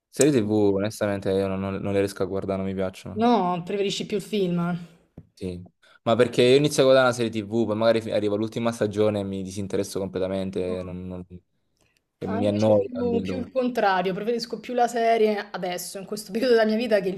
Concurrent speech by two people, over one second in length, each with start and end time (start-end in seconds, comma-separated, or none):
12.2-13.5